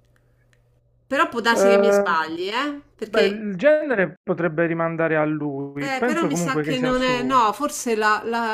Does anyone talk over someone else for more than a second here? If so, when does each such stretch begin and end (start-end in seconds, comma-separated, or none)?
5.8-7.4